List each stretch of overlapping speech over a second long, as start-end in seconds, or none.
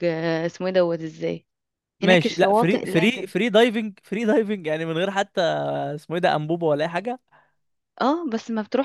2.0-3.3